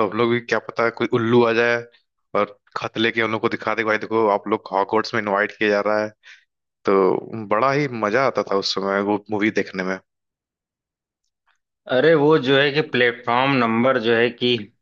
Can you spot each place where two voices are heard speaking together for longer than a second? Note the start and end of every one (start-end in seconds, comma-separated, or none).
none